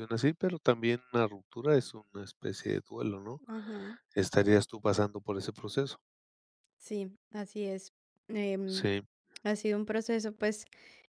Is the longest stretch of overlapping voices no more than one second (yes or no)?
yes